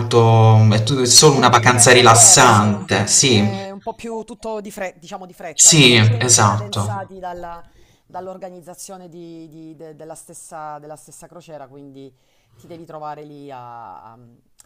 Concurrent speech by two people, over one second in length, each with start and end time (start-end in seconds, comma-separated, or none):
1.1-3.5, 5.5-7.1